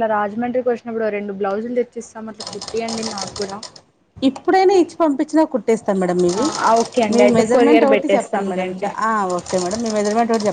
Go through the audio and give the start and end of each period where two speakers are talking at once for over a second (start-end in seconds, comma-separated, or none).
7.1-8.9